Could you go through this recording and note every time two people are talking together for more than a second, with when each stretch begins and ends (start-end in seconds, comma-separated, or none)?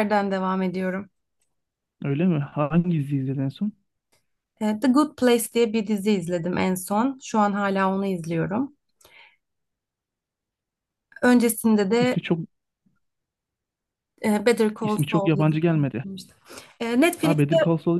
14.8-16.0